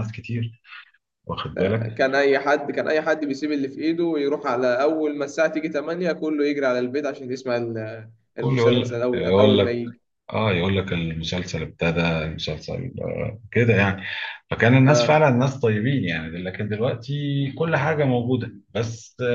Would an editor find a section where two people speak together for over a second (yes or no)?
yes